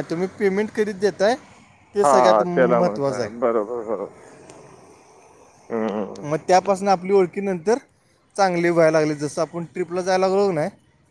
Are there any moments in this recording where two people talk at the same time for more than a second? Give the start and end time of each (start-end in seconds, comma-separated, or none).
2.0-3.3